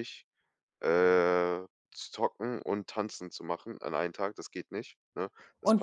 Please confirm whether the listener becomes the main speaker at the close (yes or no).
yes